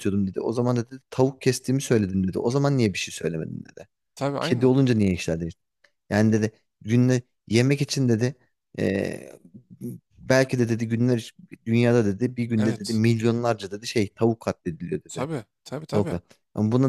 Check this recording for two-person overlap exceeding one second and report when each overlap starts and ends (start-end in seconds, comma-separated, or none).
none